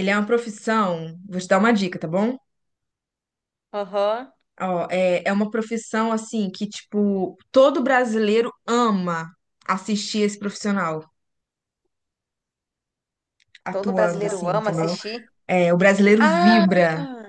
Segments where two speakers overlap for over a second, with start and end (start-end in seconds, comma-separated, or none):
13.7-14.9